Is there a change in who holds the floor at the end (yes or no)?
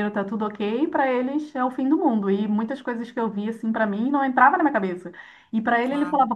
no